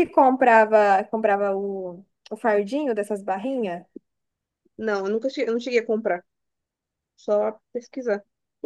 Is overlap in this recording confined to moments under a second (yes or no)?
yes